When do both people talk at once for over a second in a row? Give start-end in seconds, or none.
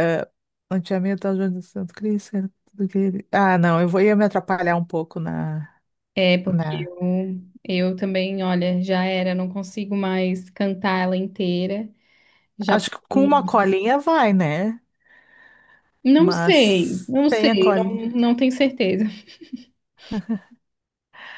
16.1-18.0